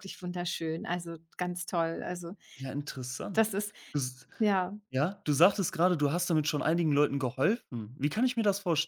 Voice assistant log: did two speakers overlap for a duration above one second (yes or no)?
no